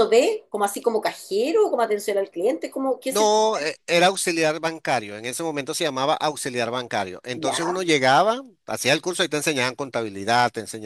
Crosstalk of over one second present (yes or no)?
no